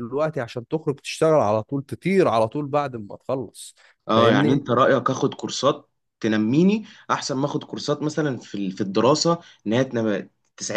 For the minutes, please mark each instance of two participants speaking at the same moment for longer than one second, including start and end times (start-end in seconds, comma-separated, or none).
none